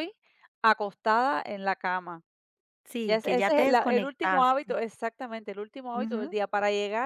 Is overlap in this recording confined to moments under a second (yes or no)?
no